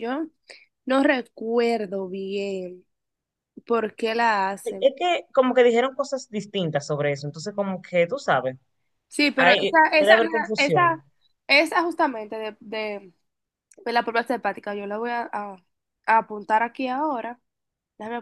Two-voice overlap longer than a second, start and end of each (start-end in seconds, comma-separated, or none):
9.4-11.0